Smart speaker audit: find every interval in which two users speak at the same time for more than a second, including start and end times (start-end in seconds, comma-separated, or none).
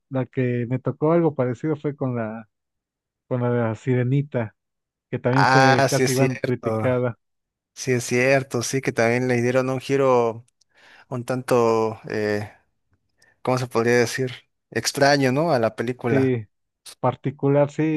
5.3-7.0